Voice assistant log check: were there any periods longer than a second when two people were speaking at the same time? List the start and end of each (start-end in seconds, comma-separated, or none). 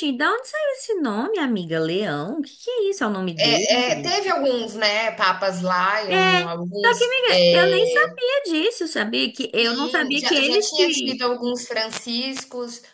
6.1-8.2, 9.6-11.2